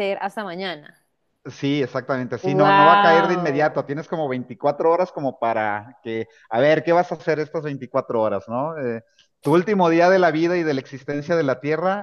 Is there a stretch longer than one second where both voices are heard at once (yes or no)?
yes